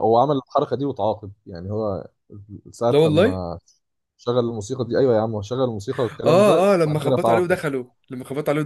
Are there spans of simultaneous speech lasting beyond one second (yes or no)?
yes